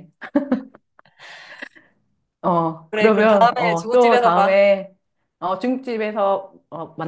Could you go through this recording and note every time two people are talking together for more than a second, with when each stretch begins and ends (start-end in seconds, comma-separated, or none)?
2.9-4.6